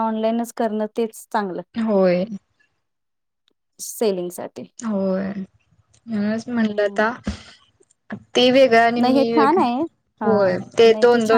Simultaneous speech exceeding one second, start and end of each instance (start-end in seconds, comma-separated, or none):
none